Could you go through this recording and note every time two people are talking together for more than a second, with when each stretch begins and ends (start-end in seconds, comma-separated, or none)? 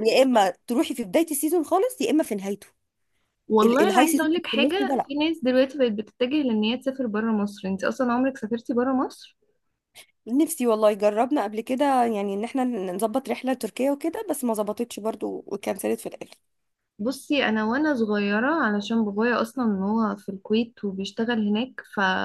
3.6-5.1